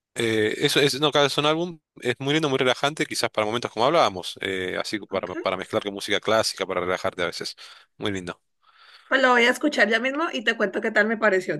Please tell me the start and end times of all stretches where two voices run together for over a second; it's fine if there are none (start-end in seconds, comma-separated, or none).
none